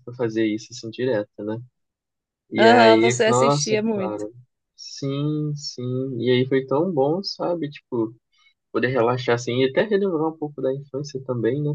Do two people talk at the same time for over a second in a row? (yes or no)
yes